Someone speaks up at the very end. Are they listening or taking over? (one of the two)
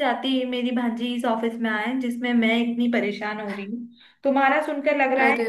listening